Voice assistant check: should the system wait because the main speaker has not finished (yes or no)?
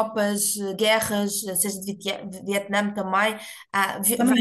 no